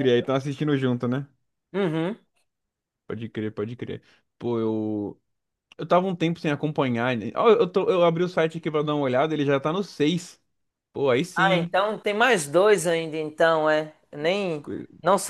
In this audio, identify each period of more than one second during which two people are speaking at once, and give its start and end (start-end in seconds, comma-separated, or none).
none